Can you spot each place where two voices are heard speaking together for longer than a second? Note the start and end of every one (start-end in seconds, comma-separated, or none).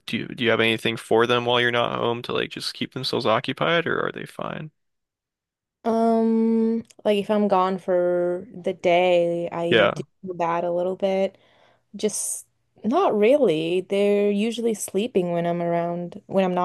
none